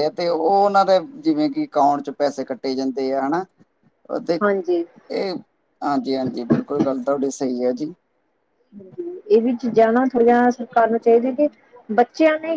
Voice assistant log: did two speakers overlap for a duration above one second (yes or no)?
no